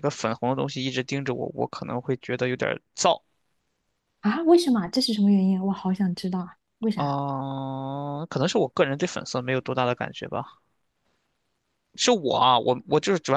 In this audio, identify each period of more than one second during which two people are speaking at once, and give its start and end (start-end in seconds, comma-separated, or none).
none